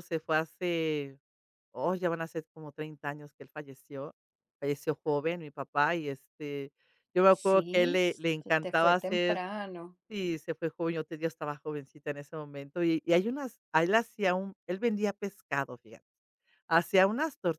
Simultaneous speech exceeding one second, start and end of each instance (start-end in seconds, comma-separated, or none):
7.4-9.4